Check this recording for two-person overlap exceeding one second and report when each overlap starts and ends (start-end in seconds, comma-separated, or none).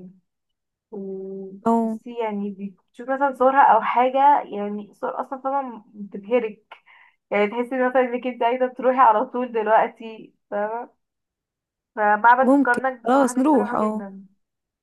12.4-14.0